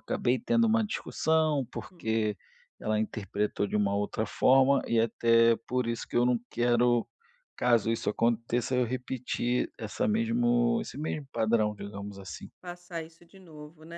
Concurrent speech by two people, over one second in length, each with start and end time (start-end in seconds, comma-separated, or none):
none